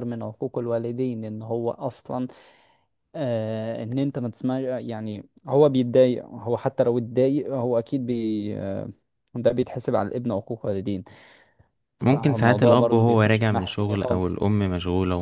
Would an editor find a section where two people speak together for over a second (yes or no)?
yes